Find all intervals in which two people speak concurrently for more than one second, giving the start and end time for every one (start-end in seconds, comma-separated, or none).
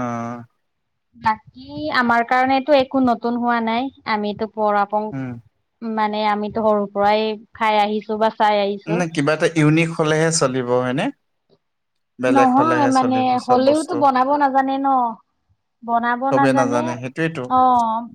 12.3-13.9